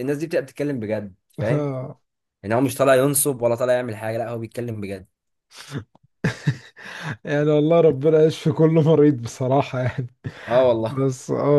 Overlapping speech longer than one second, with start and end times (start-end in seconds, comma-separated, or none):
none